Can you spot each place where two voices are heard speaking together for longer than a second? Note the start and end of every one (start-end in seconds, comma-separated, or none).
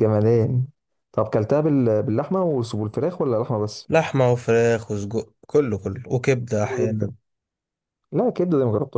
none